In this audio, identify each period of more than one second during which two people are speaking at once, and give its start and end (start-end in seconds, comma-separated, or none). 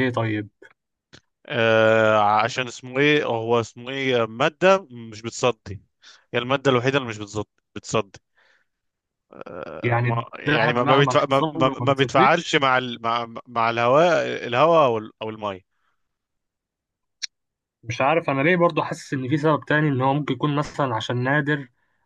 9.8-12.6